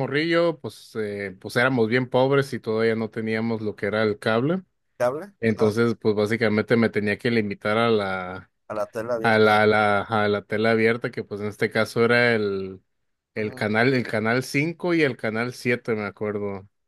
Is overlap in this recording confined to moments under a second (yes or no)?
yes